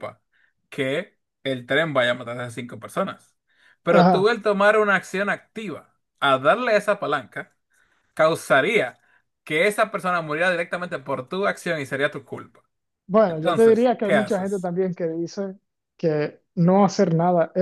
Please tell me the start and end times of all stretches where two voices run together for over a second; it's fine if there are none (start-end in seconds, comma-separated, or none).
13.3-14.7